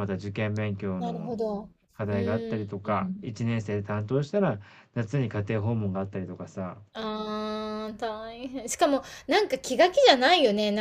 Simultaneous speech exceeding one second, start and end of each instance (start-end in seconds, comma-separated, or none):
2.1-3.3